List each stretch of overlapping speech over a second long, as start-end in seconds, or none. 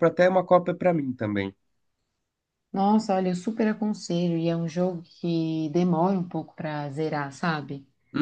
none